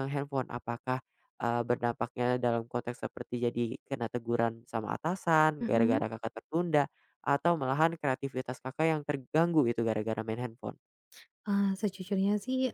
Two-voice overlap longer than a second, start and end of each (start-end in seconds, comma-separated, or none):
none